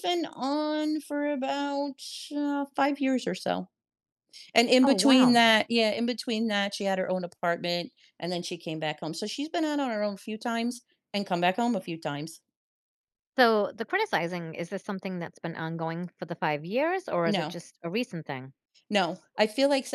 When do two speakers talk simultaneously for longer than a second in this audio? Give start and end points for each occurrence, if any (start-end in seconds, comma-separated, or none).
none